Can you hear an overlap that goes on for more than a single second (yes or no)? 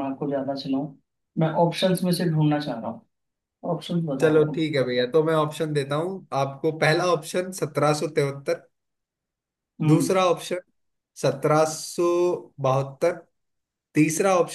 no